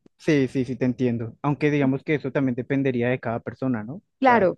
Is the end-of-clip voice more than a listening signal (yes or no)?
no